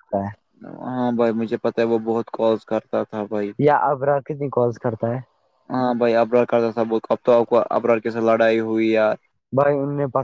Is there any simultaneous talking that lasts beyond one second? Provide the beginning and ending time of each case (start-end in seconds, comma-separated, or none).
none